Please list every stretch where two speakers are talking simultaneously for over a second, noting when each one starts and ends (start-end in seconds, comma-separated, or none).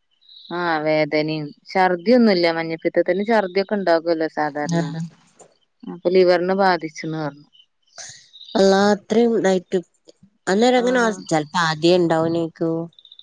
none